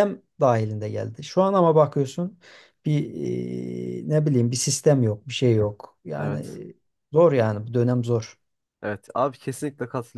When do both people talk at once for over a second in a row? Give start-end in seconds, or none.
none